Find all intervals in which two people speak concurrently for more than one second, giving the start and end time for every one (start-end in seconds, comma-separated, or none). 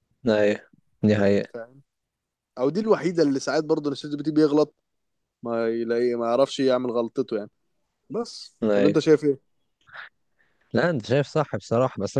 none